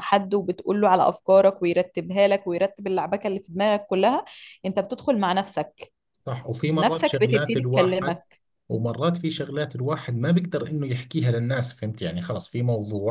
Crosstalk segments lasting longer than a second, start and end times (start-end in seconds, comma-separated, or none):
6.8-8.2